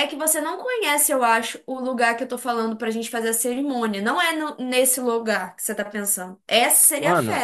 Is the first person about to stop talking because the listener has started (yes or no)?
yes